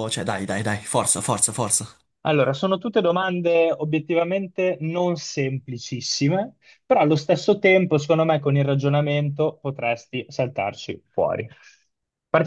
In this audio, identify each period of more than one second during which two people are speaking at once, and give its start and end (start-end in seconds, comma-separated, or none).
none